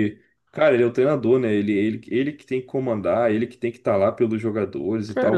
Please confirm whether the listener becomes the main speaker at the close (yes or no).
yes